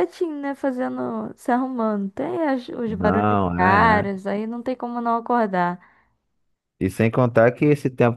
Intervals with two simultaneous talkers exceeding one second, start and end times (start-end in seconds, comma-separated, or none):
2.9-4.2